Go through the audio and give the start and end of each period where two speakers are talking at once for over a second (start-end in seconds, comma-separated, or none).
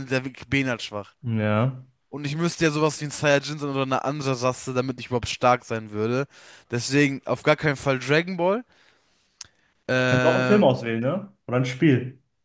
none